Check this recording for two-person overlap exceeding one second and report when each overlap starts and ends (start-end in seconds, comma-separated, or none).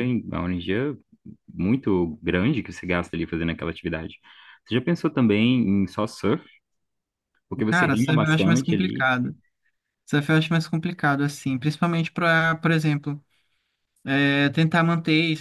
7.6-9.1